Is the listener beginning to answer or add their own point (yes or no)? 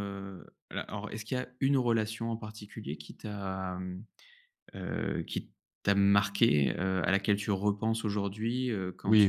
no